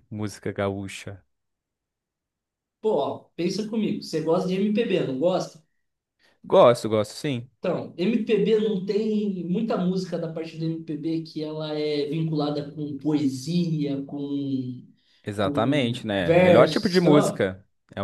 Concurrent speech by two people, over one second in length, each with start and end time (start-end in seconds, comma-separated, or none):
15.4-17.4